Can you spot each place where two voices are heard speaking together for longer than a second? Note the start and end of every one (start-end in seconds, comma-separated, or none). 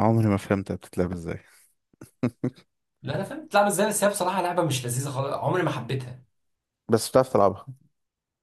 none